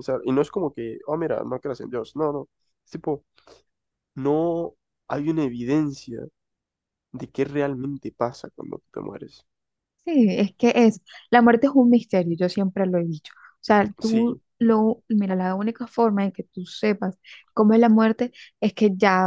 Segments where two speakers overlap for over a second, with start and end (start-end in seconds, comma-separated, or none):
none